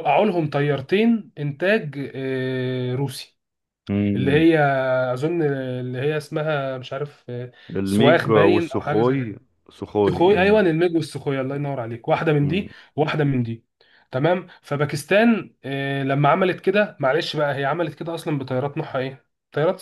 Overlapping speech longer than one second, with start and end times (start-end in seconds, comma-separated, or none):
7.7-9.3